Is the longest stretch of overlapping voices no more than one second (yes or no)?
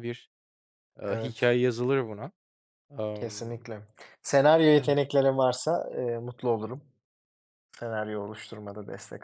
yes